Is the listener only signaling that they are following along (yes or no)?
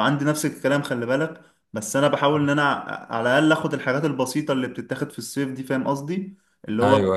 yes